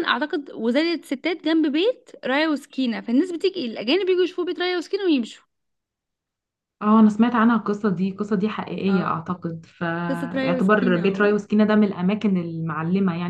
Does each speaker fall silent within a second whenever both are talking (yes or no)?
no